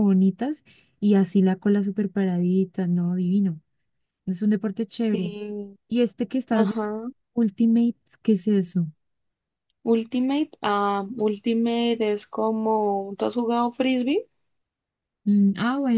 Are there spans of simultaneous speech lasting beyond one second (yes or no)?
no